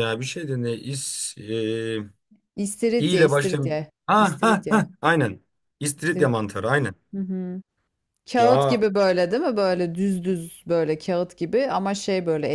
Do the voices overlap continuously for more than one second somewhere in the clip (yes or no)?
yes